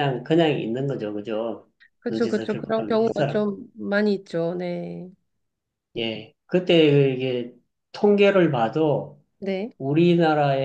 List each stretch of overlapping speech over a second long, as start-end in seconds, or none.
2.1-3.4